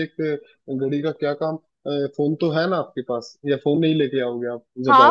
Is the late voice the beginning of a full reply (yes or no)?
yes